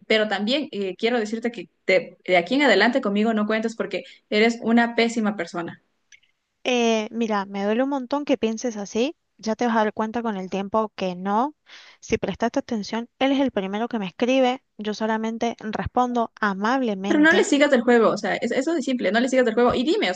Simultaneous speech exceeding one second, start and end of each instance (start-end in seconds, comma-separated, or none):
none